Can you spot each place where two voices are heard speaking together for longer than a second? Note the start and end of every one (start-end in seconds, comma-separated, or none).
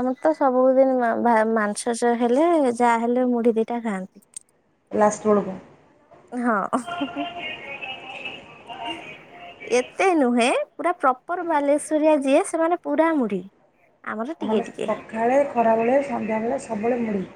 none